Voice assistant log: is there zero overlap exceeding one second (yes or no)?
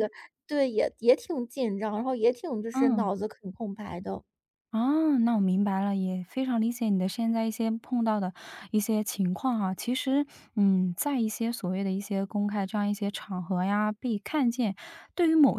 yes